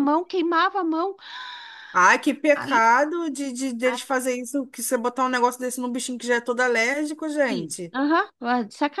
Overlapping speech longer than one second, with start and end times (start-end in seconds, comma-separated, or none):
none